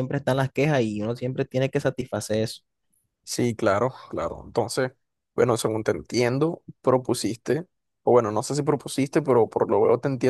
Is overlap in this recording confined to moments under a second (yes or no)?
yes